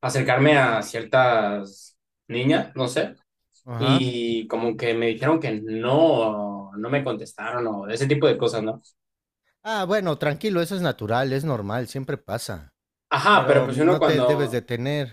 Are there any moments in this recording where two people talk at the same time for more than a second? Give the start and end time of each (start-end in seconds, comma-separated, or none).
13.3-14.6